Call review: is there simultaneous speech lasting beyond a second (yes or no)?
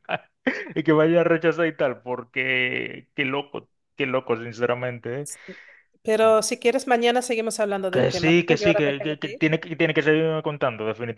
yes